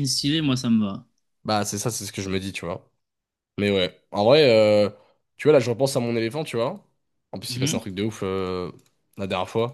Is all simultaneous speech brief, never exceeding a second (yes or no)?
yes